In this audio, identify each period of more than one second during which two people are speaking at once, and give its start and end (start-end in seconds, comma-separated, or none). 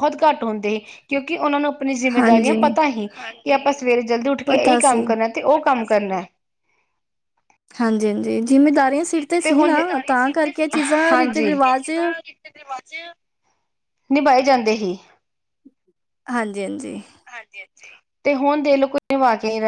none